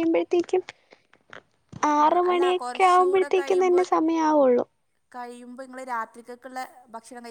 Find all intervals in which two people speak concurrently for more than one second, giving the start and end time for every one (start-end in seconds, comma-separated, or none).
2.0-3.8